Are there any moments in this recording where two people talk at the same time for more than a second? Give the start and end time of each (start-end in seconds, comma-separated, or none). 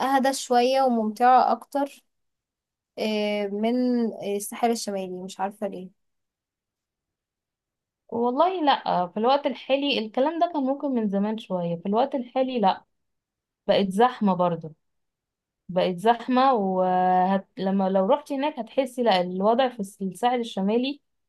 none